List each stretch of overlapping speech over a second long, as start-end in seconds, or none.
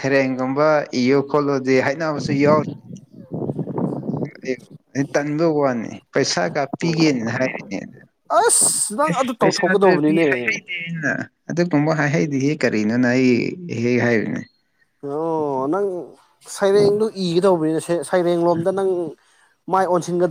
9.1-10.6